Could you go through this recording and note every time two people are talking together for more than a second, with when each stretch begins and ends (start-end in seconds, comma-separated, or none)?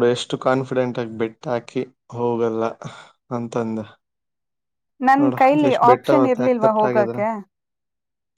5.2-7.2